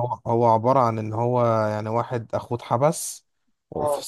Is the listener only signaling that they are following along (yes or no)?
yes